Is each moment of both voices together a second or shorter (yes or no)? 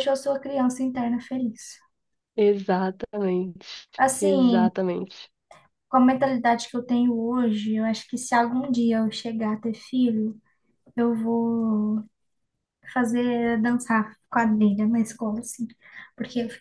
yes